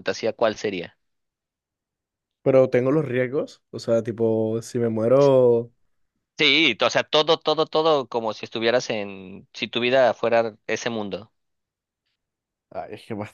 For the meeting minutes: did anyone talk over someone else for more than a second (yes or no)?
no